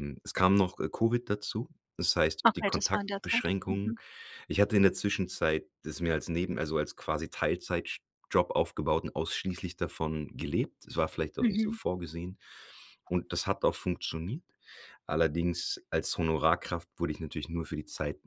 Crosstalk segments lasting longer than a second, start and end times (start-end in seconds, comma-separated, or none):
2.5-3.9